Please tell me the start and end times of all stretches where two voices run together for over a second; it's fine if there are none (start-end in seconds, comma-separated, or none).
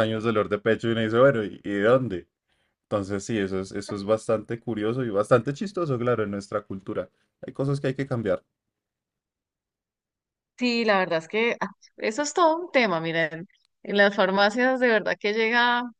none